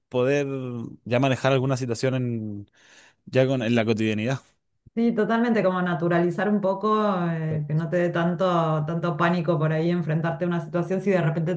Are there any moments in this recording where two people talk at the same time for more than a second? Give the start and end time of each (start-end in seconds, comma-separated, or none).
none